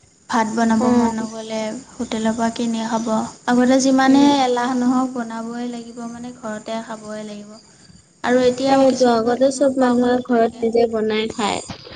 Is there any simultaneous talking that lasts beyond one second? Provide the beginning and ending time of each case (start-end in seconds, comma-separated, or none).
8.7-10.6